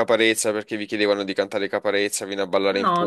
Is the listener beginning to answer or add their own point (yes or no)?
yes